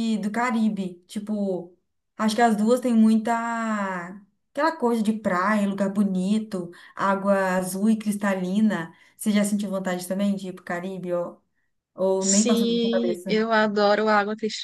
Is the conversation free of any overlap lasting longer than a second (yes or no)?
no